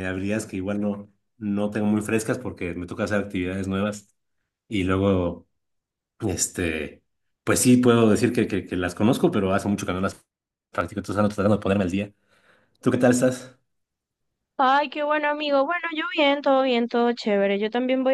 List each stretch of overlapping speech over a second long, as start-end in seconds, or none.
none